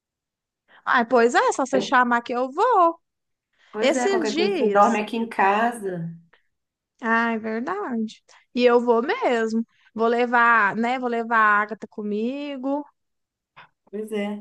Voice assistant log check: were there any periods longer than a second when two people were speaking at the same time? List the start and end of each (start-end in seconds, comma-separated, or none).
3.8-5.0